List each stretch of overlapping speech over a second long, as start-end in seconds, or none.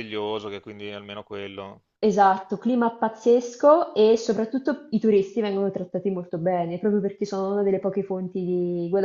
none